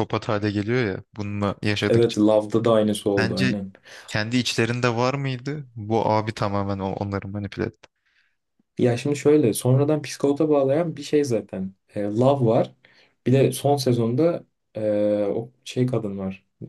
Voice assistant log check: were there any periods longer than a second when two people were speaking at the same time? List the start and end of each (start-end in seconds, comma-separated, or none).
none